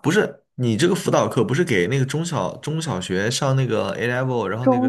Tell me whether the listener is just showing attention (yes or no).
no